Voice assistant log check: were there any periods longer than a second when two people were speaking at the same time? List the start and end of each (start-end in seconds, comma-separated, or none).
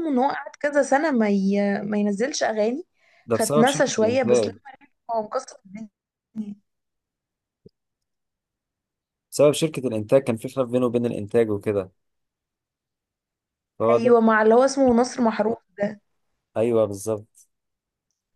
3.3-4.5